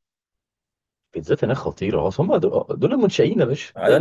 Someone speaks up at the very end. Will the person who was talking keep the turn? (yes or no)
no